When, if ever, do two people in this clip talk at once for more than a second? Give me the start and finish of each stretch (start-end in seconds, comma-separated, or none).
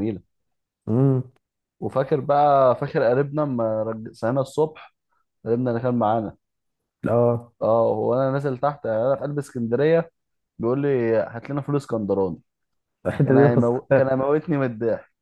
none